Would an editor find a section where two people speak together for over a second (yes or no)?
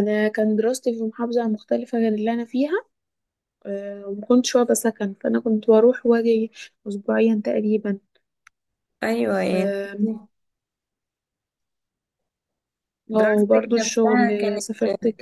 yes